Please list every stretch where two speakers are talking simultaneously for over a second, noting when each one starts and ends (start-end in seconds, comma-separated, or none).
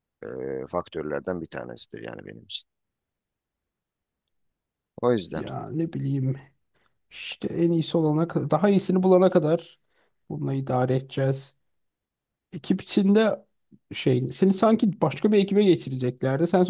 none